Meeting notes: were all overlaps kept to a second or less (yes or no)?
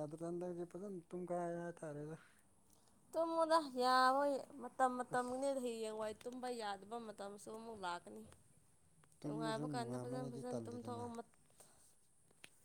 no